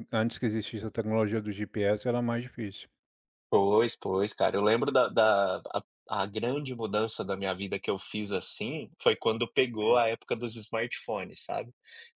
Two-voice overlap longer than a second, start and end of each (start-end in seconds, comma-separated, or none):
none